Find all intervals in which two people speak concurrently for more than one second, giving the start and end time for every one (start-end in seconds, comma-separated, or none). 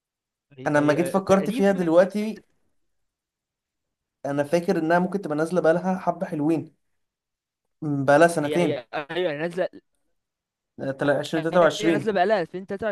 0.7-1.9